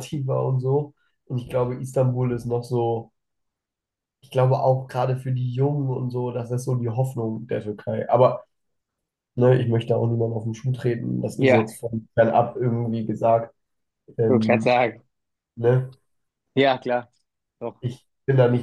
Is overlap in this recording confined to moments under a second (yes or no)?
yes